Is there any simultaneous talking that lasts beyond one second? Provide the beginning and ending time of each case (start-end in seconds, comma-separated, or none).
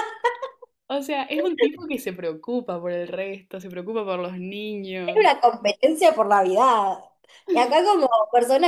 none